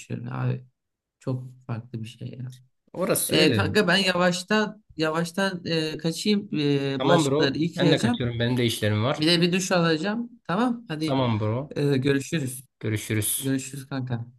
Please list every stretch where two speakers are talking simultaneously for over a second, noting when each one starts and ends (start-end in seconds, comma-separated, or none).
7.0-8.2